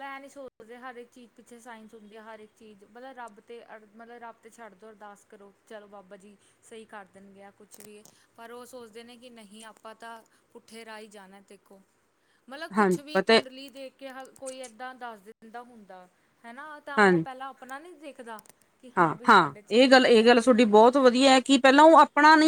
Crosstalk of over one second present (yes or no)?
yes